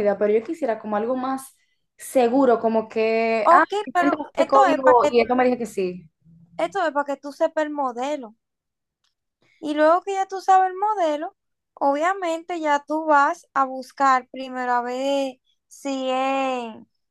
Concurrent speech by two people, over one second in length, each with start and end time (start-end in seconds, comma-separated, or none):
3.4-5.2